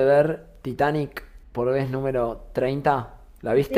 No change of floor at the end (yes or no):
no